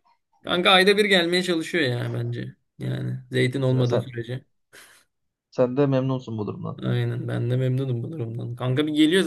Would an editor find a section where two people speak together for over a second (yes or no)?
no